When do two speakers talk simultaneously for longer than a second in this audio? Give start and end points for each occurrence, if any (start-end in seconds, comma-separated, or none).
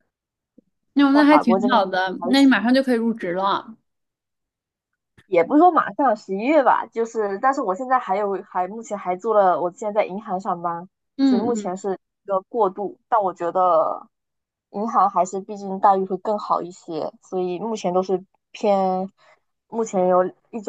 1.1-2.6